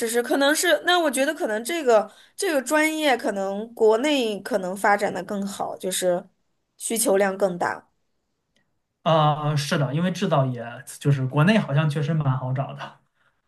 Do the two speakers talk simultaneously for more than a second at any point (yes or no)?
no